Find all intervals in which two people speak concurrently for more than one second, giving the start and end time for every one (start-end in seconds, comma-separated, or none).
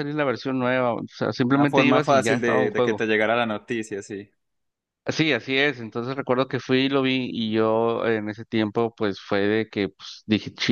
1.4-3.0